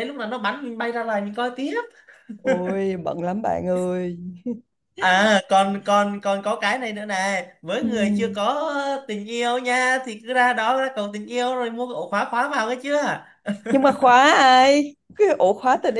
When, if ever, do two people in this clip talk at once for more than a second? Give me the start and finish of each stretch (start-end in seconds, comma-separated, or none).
none